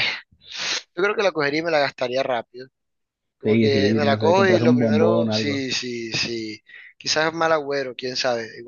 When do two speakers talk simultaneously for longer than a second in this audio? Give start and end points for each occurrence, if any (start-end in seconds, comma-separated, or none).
3.4-5.6